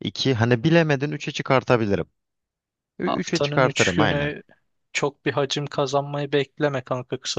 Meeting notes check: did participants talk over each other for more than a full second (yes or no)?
yes